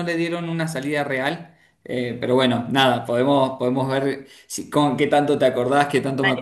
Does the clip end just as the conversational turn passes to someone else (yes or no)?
yes